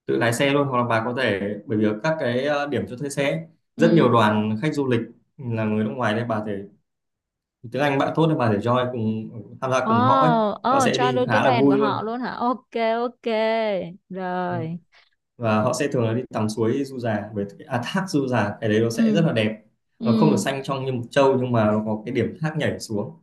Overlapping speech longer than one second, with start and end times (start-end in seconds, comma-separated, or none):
10.7-12.1